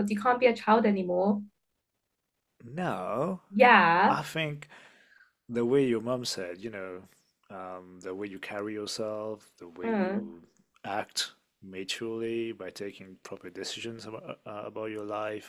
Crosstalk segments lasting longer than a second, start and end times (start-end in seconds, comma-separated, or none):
none